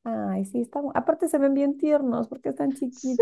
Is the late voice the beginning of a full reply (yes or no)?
yes